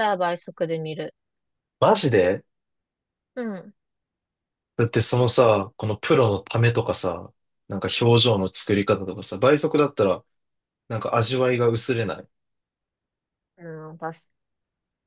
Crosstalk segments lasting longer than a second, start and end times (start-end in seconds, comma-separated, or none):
none